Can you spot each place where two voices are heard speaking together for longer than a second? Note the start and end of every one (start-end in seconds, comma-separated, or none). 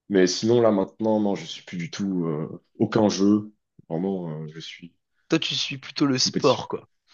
none